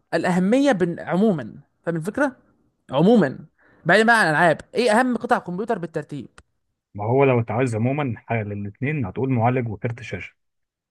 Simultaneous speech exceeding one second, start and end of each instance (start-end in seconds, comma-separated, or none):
none